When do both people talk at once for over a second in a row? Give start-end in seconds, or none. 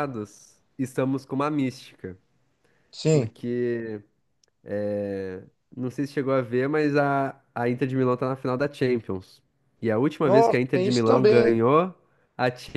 10.2-11.6